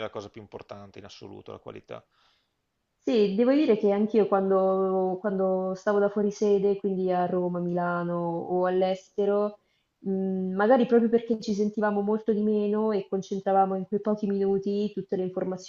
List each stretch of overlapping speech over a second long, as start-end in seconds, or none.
none